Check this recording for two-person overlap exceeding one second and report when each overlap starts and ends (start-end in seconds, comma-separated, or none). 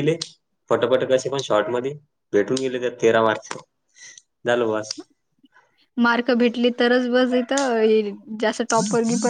none